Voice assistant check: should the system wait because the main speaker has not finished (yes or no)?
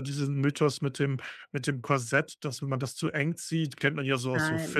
yes